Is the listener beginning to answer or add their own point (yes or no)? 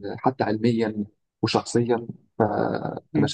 yes